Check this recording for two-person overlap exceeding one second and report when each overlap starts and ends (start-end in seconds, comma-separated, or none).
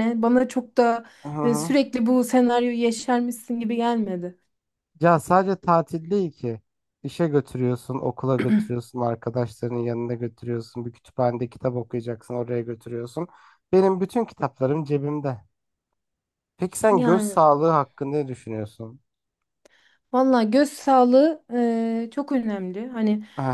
none